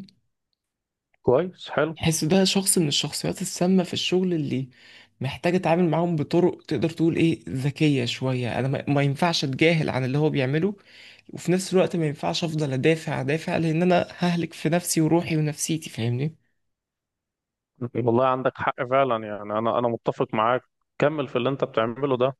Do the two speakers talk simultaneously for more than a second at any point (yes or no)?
no